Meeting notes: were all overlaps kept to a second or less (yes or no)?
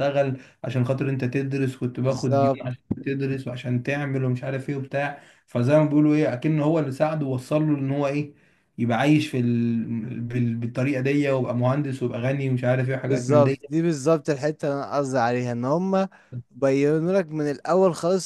yes